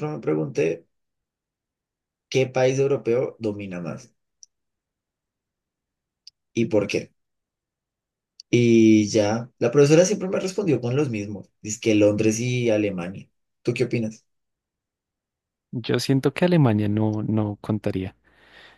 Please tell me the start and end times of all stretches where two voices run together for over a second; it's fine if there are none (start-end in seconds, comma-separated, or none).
none